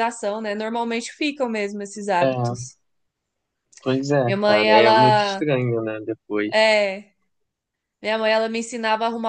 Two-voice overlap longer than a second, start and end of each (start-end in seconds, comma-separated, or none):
4.2-5.4